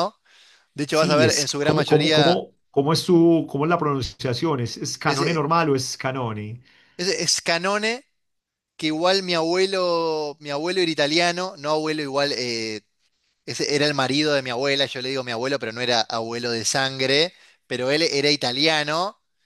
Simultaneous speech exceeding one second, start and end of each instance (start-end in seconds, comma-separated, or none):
0.9-2.4